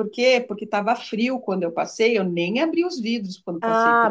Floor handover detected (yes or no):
yes